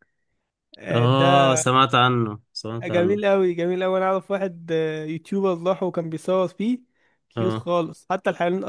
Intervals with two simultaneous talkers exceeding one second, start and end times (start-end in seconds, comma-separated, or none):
none